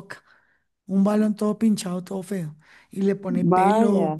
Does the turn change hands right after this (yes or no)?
no